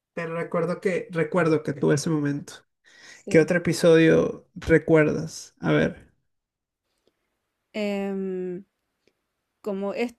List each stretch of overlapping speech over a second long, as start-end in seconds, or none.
none